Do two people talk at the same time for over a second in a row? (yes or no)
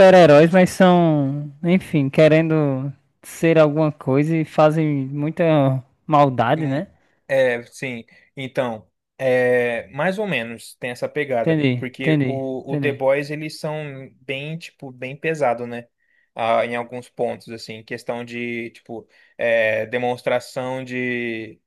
yes